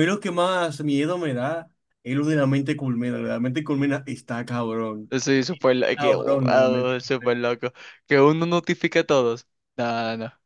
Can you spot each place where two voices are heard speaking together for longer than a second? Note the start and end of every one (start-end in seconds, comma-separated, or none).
6.0-7.3